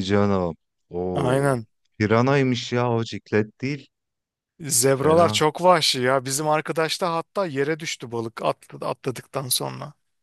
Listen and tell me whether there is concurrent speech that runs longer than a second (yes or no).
no